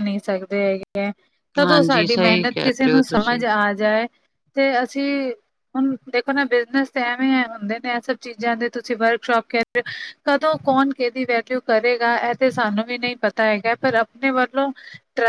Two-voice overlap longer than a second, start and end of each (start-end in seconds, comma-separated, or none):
1.6-3.4